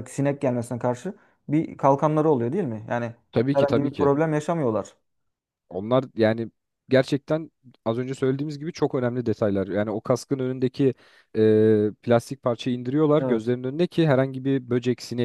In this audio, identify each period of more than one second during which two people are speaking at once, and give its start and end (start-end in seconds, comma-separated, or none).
none